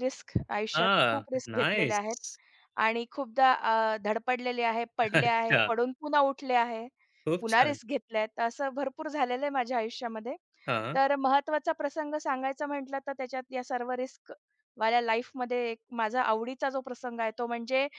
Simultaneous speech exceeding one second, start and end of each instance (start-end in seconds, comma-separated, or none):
0.8-2.2